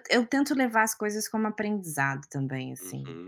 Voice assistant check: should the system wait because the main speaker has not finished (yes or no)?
no